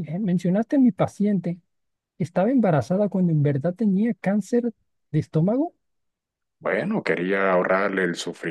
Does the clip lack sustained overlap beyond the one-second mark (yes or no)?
yes